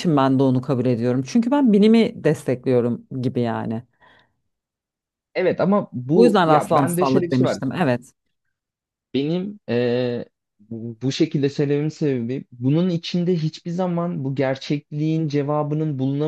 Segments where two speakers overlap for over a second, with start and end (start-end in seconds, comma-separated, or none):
6.1-7.6